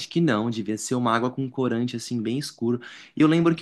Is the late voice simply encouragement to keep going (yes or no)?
yes